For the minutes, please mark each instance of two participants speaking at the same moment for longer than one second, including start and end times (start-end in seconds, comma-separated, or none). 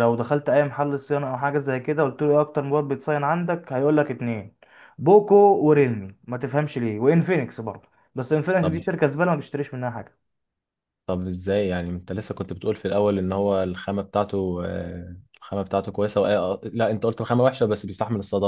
none